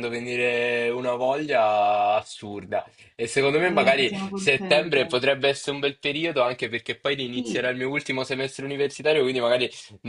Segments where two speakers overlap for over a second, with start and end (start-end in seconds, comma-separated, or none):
3.6-5.2